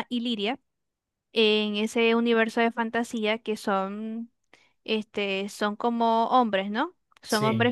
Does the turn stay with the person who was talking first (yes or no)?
yes